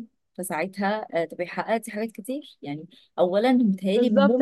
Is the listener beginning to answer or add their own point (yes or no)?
yes